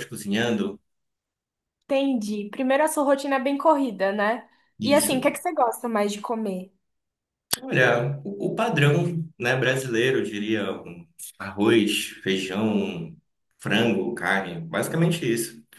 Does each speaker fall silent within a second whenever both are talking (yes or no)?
yes